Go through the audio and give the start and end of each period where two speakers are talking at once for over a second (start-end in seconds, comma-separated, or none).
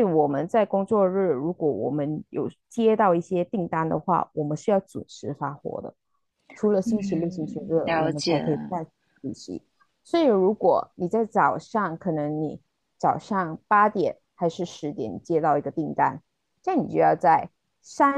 6.8-8.4